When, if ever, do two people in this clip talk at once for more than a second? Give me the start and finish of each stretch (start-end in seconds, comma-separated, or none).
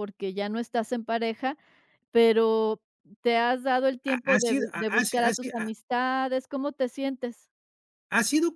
4.1-5.7